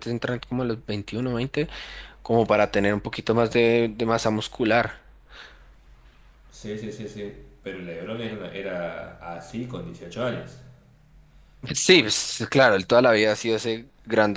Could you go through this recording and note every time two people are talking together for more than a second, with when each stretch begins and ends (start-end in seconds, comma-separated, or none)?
none